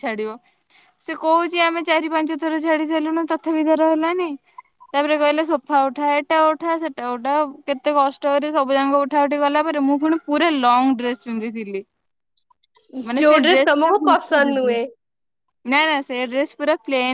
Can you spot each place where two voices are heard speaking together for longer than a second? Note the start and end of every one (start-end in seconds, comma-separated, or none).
13.2-14.8